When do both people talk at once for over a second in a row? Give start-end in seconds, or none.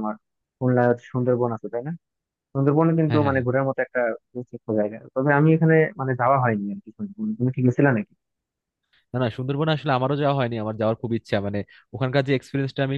none